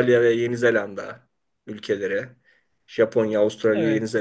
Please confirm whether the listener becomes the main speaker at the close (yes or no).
no